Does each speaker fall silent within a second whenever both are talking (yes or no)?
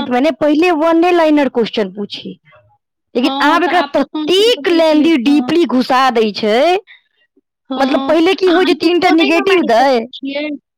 no